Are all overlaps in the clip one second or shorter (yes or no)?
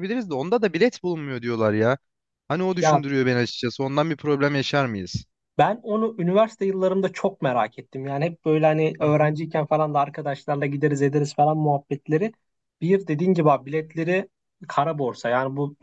yes